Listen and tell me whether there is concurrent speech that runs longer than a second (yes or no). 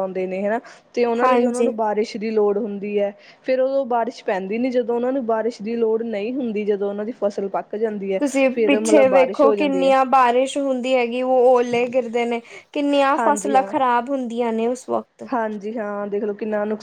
yes